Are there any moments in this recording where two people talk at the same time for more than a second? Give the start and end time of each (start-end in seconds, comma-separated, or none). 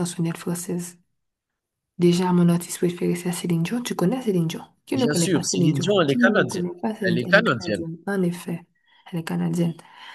4.9-7.8